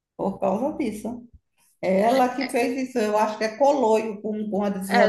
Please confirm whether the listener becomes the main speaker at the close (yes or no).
yes